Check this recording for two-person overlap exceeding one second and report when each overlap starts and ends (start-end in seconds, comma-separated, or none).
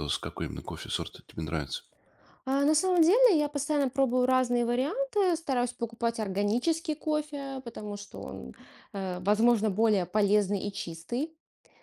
none